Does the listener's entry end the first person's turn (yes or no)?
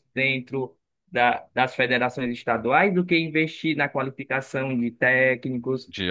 no